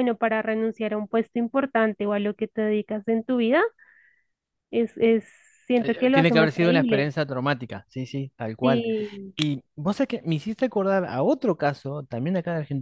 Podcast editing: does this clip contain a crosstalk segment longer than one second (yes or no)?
yes